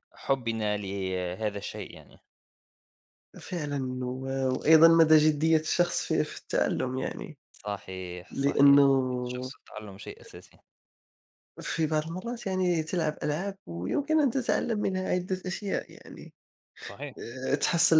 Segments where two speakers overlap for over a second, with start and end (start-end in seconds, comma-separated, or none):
none